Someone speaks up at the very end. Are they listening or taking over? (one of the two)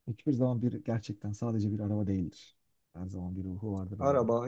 taking over